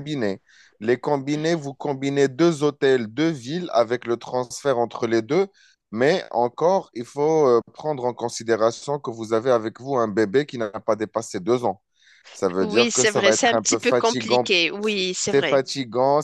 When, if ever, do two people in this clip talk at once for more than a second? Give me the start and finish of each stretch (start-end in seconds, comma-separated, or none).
12.6-14.5